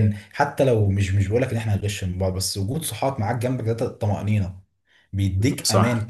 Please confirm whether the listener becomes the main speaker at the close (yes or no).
no